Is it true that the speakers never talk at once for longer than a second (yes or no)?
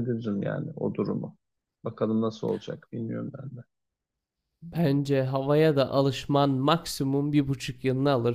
yes